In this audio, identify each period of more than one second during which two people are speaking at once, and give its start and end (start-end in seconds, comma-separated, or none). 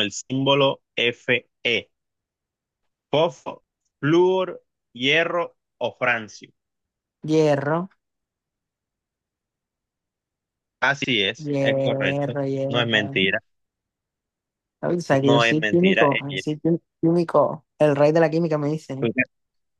11.4-13.2, 15.2-16.5